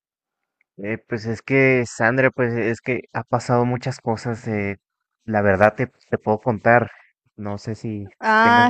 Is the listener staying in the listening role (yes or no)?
no